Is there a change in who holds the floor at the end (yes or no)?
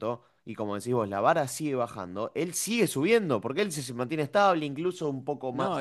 yes